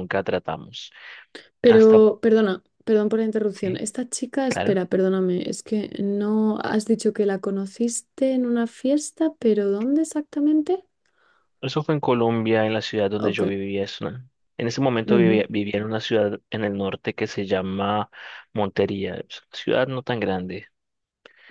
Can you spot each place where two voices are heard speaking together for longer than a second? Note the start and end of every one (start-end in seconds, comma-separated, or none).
none